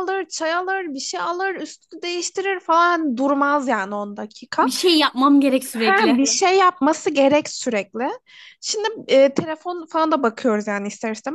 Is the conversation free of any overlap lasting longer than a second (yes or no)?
yes